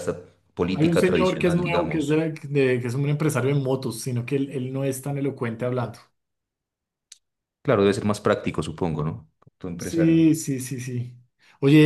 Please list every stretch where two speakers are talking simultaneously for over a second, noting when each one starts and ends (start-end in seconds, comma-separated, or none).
0.7-2.2